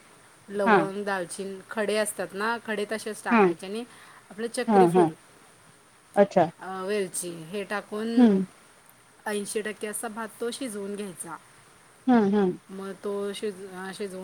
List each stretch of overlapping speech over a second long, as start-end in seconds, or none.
none